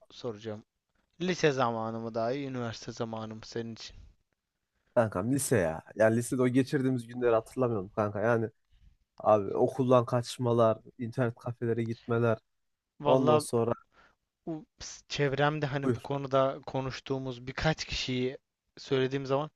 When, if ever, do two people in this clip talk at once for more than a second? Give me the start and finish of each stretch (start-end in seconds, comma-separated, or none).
none